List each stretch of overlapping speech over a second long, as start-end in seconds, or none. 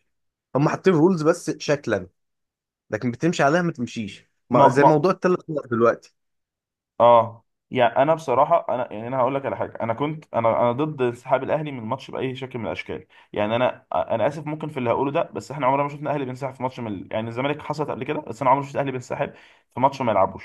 none